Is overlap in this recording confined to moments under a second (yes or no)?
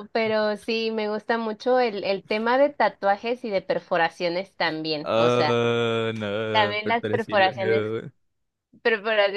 no